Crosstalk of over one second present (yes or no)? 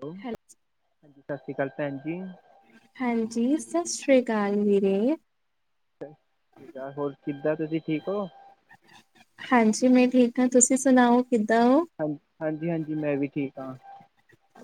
no